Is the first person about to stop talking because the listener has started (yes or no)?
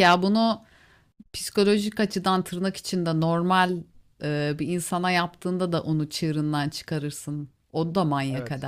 no